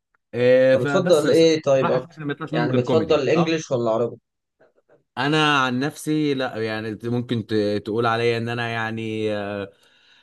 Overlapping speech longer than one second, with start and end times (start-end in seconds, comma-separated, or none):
0.7-3.6